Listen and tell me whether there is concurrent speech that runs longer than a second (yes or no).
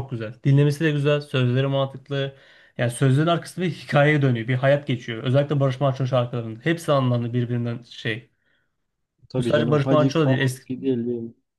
yes